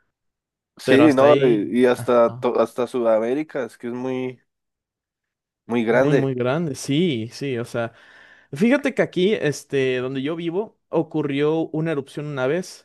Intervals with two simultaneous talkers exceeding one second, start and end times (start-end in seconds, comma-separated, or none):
0.8-2.5